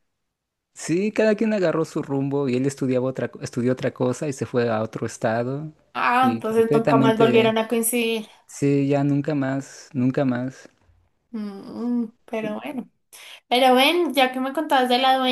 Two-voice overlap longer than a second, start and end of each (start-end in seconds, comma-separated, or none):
6.2-7.5